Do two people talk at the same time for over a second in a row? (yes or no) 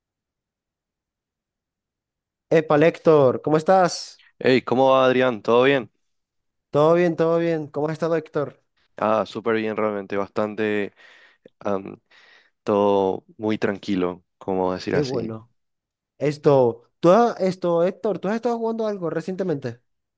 no